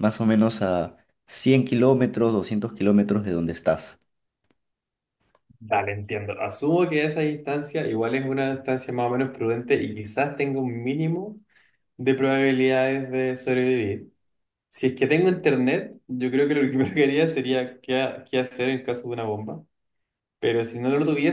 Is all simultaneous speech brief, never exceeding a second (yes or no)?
yes